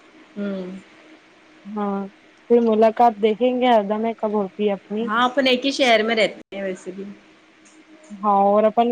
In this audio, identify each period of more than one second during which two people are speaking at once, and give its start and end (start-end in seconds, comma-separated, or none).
none